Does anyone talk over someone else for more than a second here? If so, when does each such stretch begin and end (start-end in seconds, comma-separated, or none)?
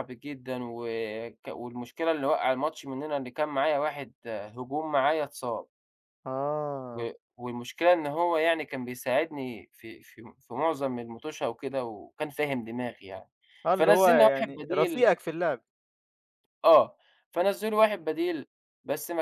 13.7-15.1